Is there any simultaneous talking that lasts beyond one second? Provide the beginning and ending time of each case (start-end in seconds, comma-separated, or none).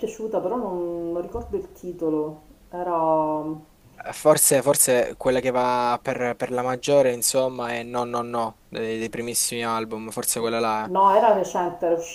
none